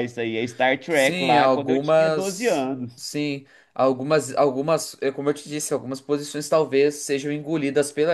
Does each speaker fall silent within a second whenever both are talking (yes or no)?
no